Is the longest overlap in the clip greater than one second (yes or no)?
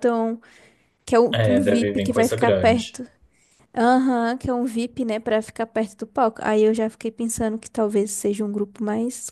yes